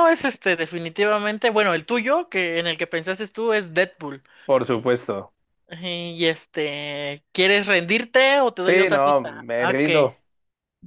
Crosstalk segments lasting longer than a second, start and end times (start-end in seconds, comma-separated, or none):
8.7-10.1